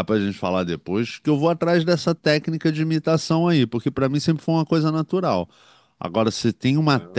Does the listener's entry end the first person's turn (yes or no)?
no